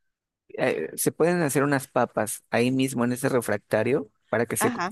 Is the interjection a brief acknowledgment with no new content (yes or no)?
yes